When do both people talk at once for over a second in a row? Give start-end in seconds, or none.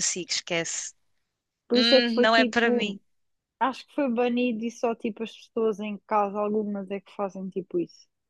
1.7-3.0